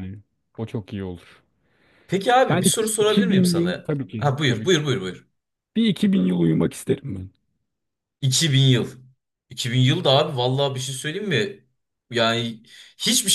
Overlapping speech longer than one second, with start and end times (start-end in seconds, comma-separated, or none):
2.5-4.8